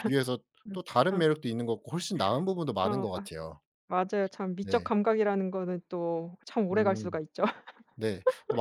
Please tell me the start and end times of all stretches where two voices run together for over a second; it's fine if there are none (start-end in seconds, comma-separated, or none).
none